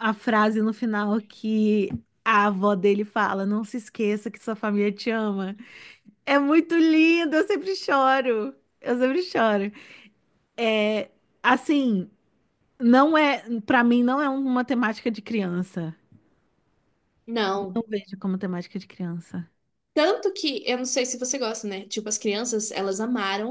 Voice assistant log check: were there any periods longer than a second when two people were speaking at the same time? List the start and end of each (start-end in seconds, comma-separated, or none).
none